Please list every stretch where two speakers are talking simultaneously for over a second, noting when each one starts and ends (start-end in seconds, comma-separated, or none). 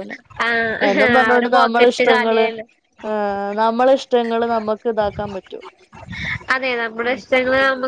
0.9-2.5